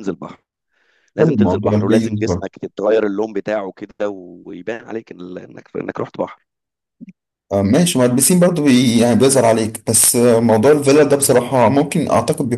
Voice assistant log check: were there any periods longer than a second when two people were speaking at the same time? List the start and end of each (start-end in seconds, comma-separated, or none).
1.2-2.5